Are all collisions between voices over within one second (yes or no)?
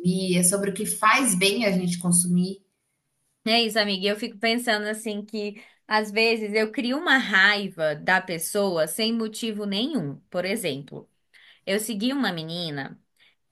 yes